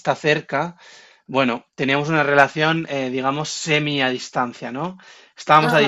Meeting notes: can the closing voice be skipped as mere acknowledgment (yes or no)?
yes